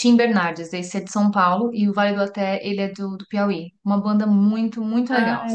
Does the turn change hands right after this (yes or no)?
yes